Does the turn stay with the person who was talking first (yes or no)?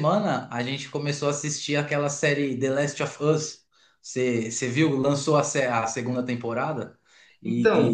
yes